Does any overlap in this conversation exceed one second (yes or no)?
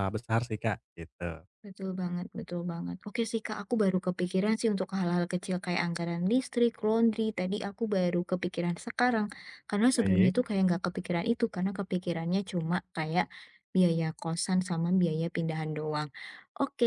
no